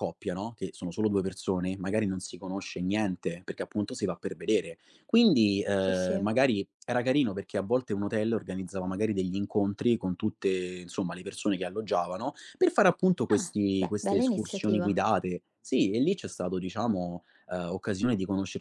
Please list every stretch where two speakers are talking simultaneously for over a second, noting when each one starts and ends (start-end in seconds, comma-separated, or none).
13.3-15.0